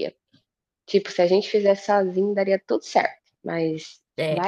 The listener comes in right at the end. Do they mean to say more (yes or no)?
yes